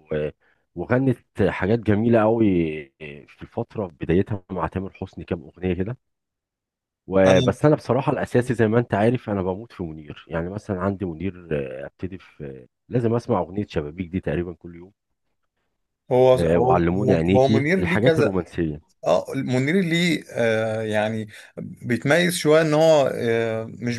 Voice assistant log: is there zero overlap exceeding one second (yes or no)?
no